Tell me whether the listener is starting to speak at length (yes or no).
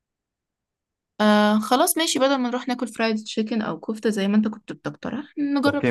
yes